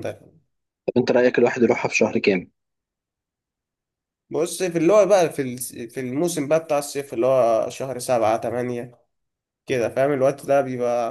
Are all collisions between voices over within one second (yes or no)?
yes